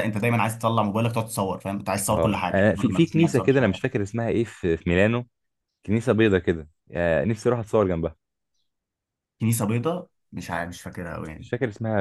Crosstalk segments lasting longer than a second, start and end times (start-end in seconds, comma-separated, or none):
2.1-3.8